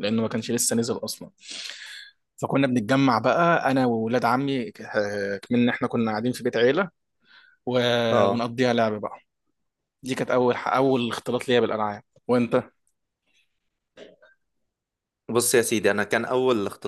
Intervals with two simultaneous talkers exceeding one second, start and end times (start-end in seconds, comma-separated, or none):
none